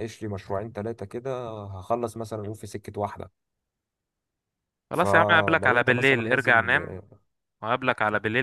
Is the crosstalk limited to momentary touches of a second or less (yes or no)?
no